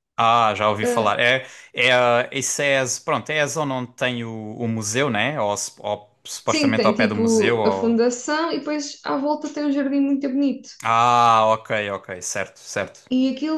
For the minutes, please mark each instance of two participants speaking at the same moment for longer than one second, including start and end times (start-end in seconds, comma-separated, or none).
6.5-8.0